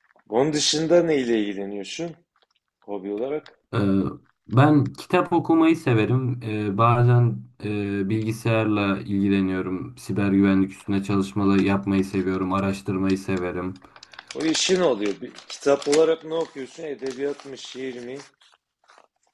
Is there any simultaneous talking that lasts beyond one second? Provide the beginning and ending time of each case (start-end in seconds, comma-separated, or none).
none